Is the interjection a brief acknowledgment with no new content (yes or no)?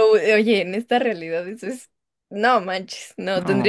yes